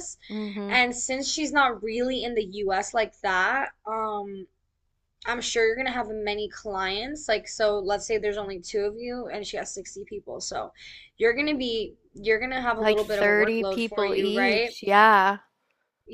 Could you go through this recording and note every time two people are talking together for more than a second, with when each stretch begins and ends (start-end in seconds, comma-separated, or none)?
12.8-14.8